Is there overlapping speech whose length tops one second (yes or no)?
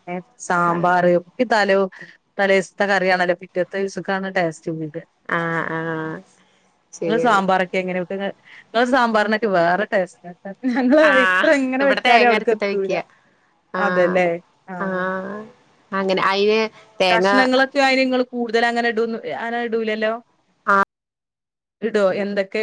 yes